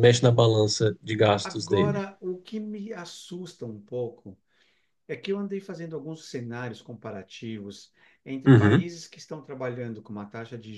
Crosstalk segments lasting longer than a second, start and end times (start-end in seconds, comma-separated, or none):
none